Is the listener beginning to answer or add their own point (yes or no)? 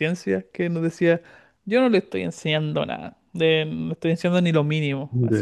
no